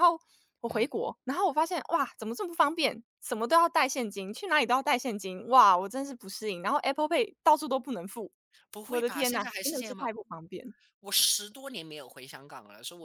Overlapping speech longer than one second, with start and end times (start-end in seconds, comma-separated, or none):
8.8-10.2